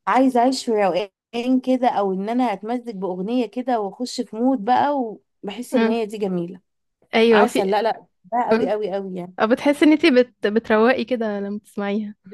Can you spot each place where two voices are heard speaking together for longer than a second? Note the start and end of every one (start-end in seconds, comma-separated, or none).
none